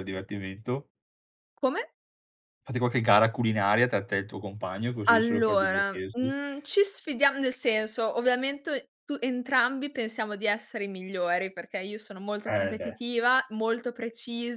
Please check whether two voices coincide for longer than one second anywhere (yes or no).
yes